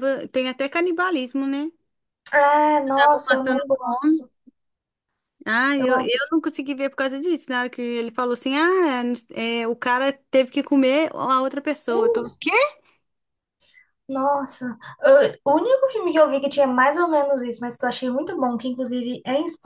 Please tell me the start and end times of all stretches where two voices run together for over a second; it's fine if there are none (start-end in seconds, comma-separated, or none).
2.9-4.2